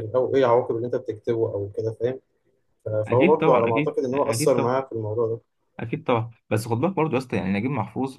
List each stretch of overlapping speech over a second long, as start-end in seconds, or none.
3.1-4.5